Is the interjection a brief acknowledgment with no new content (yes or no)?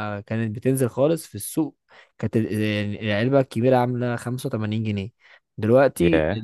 yes